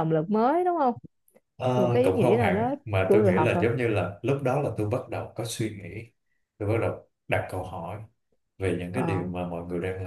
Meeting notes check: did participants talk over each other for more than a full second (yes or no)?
yes